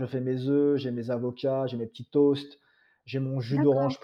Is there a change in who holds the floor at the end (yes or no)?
no